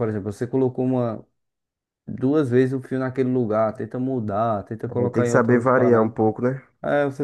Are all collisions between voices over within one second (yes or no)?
no